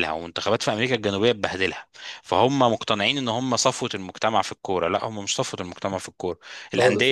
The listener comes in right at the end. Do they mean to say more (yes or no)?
no